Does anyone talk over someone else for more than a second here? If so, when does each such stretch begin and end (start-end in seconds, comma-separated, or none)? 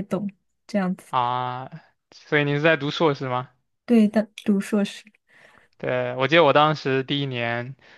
none